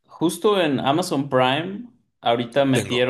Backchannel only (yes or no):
yes